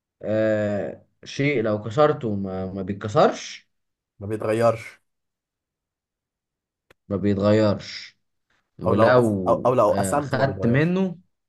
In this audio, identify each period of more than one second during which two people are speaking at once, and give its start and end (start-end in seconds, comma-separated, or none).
8.9-10.9